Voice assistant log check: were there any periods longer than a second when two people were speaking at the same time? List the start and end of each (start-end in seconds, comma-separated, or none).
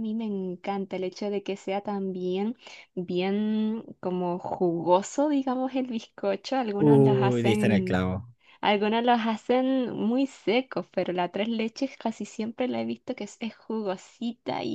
6.8-8.0